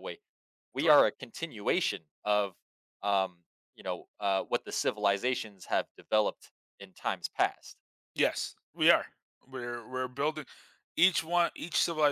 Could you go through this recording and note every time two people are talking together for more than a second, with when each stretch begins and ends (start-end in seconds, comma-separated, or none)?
none